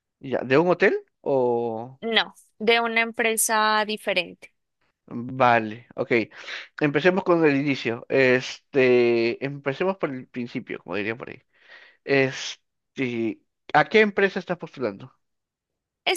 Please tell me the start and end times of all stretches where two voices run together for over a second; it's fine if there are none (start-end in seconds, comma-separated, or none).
none